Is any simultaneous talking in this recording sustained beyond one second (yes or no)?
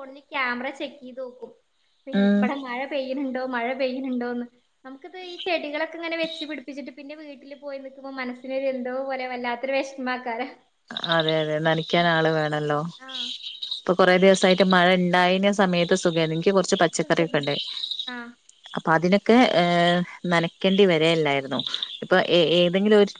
no